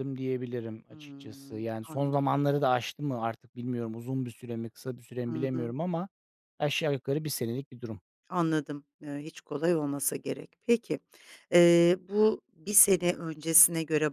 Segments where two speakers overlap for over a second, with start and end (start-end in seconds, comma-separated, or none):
0.9-2.2